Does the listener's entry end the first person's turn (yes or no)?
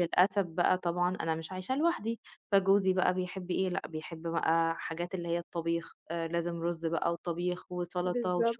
no